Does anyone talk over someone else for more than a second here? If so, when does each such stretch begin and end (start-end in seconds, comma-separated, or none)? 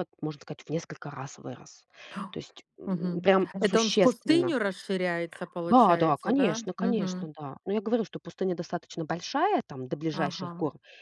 2.9-4.5, 5.6-7.3